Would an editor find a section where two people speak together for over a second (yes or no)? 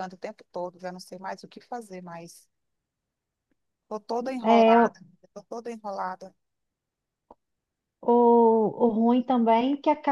no